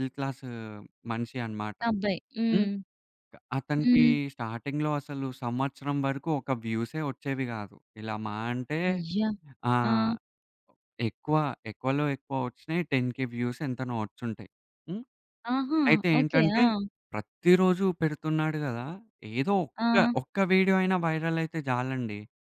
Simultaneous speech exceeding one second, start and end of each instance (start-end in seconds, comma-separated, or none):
none